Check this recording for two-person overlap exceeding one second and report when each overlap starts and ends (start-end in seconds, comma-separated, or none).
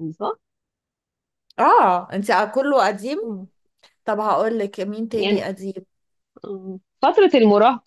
none